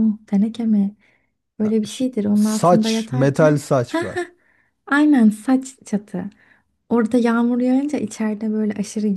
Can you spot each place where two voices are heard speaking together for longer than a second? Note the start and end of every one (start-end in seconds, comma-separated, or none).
1.6-3.7